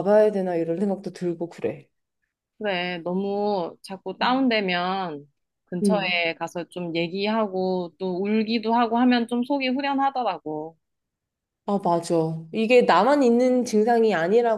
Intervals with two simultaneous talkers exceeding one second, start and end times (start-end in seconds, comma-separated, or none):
none